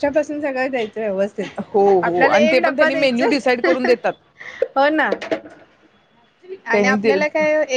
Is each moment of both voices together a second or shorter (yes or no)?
no